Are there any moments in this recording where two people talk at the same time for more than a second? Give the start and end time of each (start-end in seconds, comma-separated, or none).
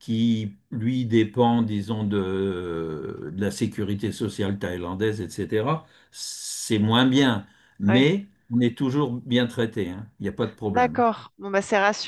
none